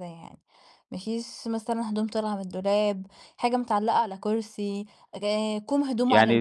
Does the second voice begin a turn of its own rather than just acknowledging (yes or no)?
yes